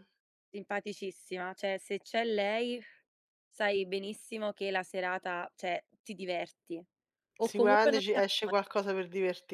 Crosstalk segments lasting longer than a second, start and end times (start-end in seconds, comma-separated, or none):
7.4-8.6